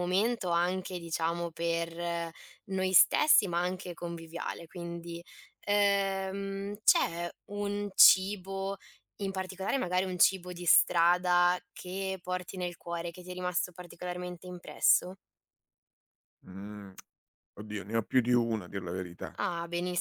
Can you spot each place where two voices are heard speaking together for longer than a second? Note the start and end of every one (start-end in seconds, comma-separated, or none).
none